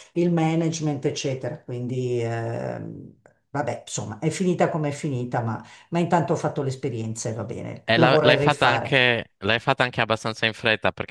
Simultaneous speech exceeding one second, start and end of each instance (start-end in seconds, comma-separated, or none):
7.8-9.0